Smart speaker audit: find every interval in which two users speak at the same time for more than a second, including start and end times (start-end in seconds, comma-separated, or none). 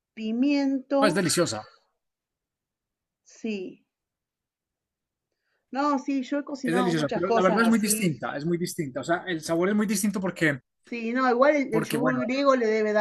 6.6-8.0